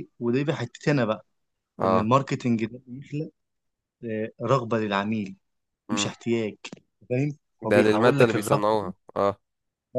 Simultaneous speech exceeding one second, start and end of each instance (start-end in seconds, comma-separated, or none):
7.6-8.9